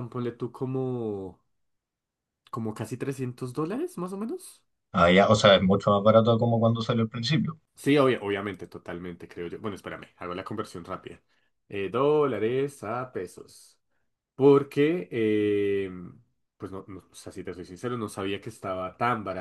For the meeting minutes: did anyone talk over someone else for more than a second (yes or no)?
no